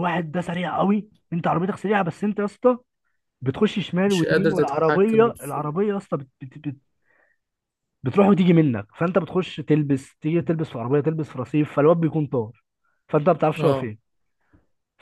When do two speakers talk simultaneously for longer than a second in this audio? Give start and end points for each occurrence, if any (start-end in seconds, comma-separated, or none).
4.1-5.7